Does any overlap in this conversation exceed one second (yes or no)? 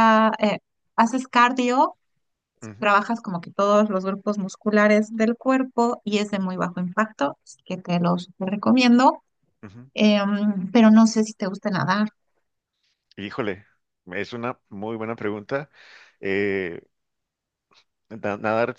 no